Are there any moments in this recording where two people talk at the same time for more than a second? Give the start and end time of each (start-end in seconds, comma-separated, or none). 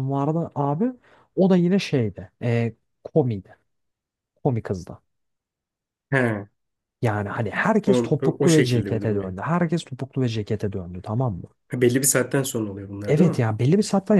7.8-9.3